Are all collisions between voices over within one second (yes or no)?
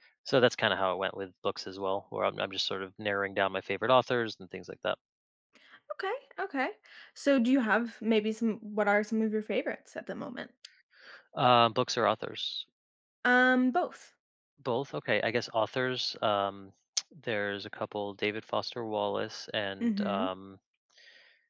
yes